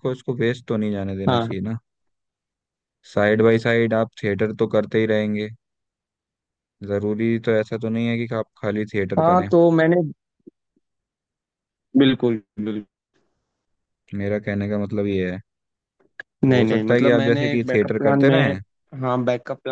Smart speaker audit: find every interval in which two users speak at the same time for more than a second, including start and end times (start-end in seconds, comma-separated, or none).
16.4-18.5